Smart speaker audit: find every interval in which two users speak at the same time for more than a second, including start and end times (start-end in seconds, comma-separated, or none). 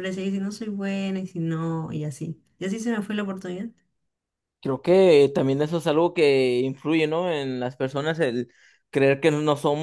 none